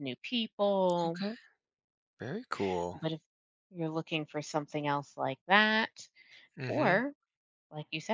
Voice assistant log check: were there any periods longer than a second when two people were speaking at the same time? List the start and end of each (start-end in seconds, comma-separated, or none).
none